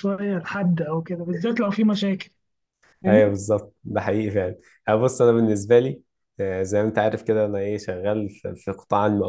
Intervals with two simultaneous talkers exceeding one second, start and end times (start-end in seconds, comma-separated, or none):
none